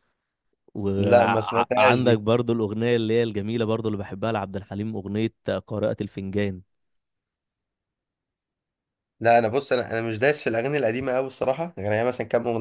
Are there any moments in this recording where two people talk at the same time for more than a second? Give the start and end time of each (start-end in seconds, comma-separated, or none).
1.0-2.2